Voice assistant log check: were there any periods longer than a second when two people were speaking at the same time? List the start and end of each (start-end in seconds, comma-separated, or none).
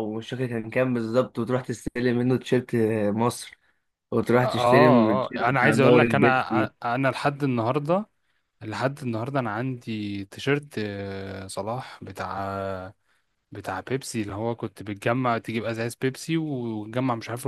4.4-6.7